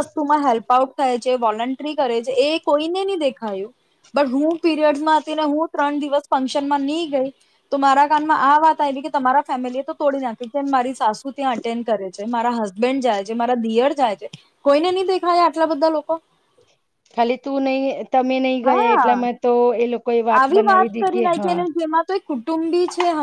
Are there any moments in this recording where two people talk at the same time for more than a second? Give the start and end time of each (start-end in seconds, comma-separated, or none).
none